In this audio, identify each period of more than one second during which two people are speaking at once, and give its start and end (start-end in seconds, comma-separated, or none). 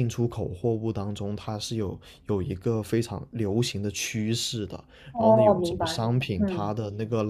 5.1-6.7